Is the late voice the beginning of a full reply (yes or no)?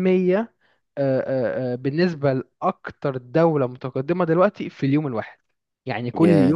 no